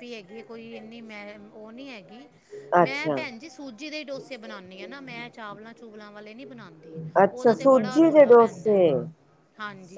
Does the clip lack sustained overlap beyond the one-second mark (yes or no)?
no